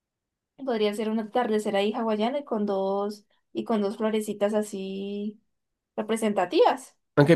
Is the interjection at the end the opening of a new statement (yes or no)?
yes